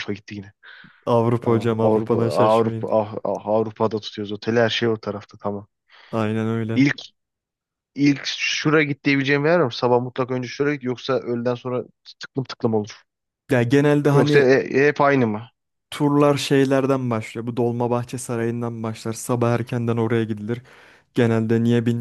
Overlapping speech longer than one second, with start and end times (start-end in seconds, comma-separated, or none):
1.4-2.9